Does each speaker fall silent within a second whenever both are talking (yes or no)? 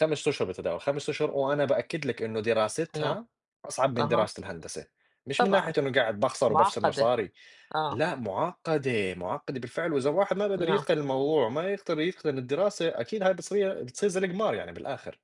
yes